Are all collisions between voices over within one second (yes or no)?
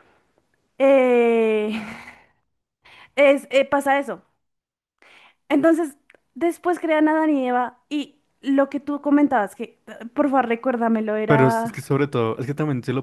yes